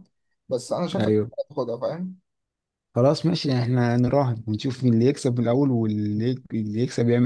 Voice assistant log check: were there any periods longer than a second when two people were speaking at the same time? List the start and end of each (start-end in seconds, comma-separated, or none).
none